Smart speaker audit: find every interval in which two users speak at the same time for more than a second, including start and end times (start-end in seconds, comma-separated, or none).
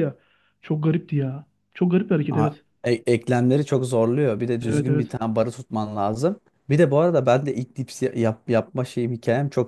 none